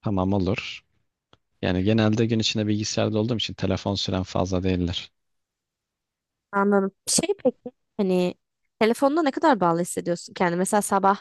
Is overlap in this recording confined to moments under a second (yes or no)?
yes